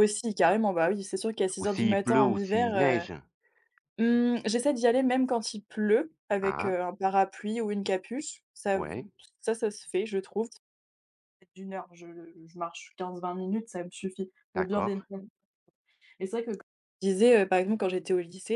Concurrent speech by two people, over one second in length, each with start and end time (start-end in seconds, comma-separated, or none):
1.6-3.0